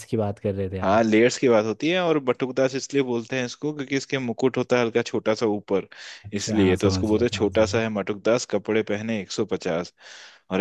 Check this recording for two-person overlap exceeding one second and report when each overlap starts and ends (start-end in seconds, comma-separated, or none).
6.4-7.7